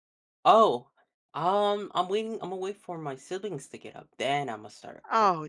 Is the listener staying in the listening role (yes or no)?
no